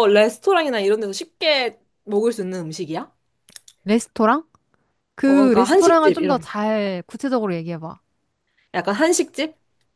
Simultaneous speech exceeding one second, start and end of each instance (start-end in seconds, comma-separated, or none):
5.2-6.5